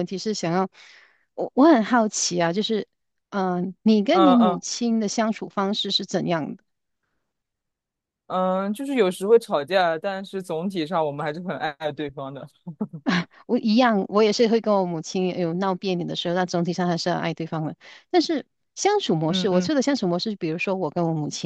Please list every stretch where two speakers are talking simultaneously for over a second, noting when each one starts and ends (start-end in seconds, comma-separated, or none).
none